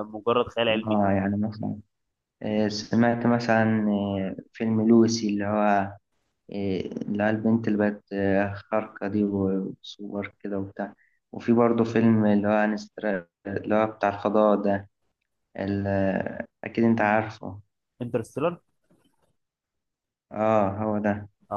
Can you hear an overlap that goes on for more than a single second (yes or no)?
no